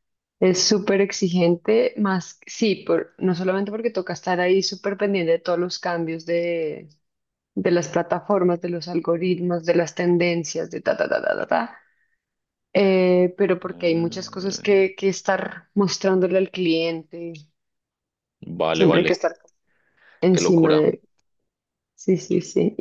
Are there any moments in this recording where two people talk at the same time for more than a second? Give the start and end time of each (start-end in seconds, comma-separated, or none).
13.7-14.8